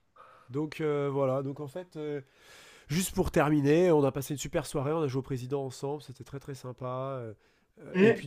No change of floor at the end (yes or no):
yes